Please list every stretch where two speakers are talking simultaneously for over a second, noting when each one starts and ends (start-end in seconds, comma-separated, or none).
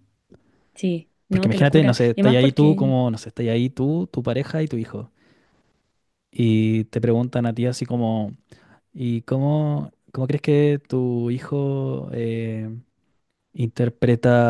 1.3-2.9